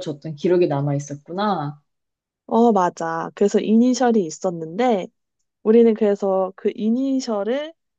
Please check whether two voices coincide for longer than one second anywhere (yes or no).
no